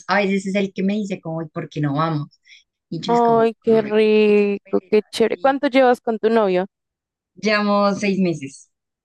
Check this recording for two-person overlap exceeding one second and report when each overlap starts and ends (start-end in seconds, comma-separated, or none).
3.1-5.6